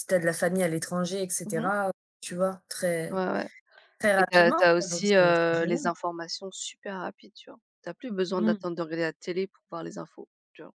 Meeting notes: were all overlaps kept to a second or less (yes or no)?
no